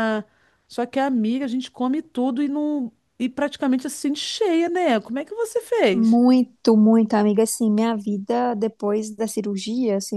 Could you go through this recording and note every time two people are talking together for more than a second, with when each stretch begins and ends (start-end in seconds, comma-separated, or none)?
none